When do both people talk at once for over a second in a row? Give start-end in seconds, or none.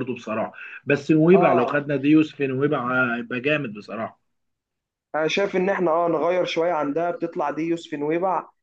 none